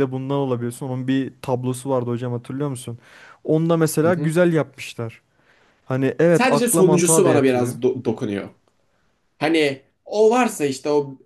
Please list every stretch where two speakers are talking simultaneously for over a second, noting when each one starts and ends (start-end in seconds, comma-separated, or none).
6.3-7.8